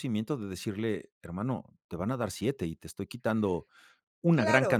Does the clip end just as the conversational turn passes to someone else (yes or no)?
yes